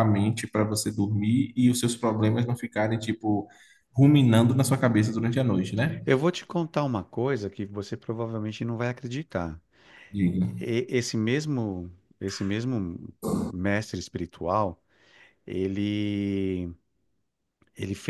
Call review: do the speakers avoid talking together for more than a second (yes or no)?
yes